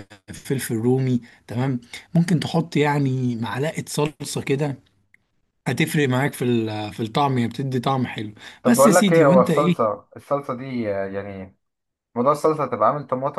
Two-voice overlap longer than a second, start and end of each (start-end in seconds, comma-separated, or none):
8.6-9.9